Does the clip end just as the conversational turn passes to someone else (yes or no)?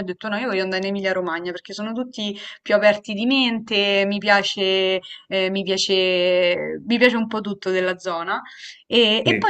no